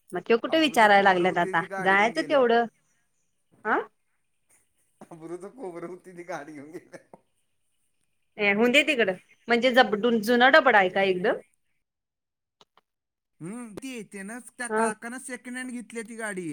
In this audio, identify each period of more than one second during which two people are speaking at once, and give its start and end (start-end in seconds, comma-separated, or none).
0.5-2.6